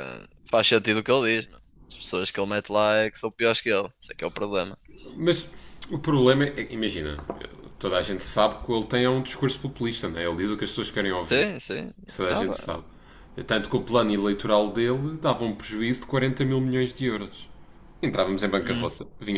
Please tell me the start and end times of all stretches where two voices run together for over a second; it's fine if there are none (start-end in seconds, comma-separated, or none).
none